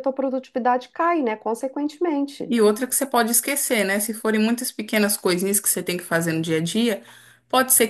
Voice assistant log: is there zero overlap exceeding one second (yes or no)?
yes